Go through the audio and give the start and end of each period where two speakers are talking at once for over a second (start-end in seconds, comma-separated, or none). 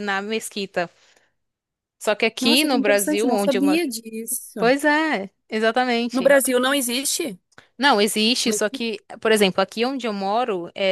2.4-3.8